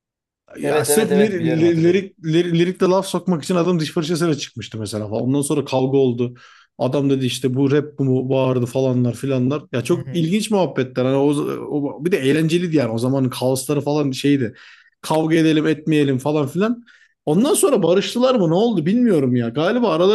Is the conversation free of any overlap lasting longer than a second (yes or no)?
no